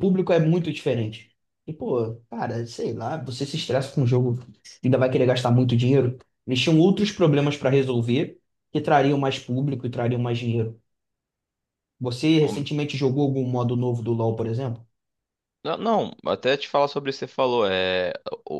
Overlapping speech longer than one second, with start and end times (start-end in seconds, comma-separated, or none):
none